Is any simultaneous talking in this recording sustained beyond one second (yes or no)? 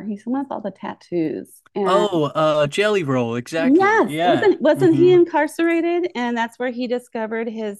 yes